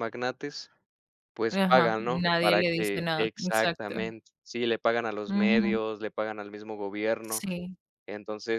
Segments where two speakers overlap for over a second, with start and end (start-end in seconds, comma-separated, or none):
1.5-3.9